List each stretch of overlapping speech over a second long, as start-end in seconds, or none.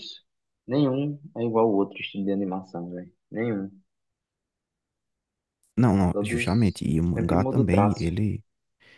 6.1-8.1